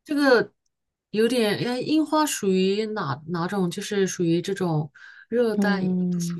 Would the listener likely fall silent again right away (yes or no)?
no